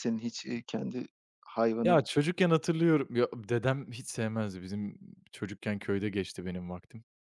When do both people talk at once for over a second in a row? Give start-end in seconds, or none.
none